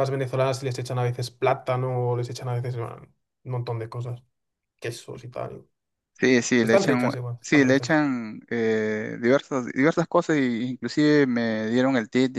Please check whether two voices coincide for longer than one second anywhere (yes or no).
yes